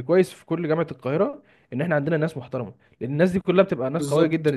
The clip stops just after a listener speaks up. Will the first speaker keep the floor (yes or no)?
yes